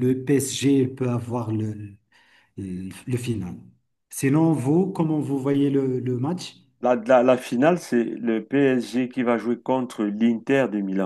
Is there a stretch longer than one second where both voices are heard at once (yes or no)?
no